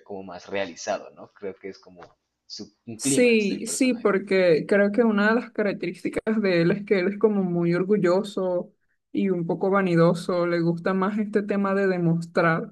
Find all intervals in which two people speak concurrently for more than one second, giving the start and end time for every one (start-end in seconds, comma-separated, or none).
3.0-4.2